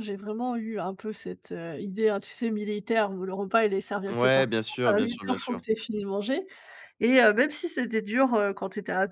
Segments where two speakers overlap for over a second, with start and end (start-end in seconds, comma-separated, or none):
4.1-5.7